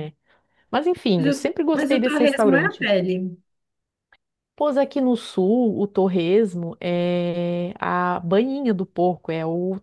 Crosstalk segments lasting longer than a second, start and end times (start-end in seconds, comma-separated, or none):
1.2-2.9